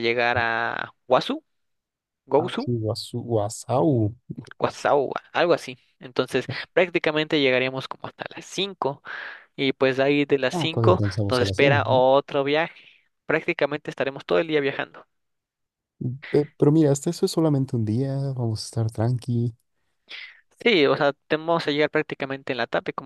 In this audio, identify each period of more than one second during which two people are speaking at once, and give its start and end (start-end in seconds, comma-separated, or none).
10.5-12.0